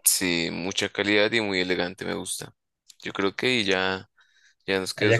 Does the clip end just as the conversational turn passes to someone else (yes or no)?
yes